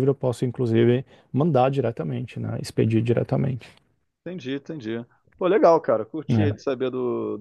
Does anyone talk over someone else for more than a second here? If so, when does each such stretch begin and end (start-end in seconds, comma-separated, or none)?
none